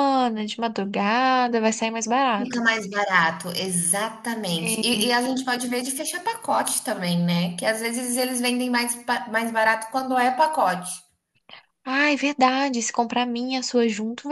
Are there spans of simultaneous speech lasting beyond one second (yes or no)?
no